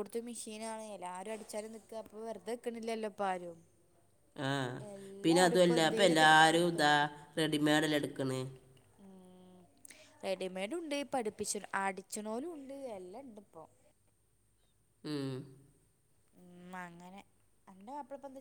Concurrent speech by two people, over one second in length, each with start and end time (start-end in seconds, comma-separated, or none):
5.2-6.9